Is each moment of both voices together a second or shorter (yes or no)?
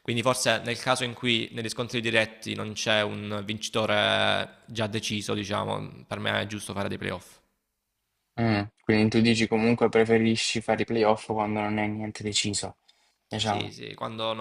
yes